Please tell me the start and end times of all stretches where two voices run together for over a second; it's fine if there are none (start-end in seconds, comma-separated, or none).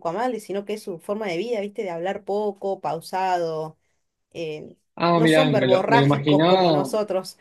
5.1-6.9